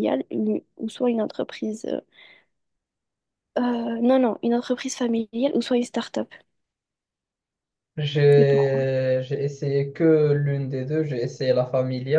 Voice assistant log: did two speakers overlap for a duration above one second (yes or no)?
no